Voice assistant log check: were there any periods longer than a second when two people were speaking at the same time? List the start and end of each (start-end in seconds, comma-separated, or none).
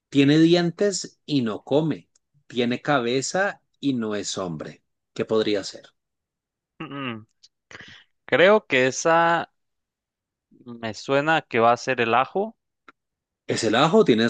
none